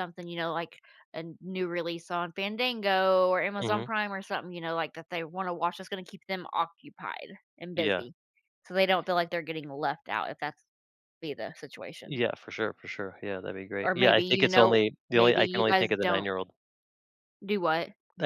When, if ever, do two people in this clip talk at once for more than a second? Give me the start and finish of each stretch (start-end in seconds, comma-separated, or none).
13.8-16.3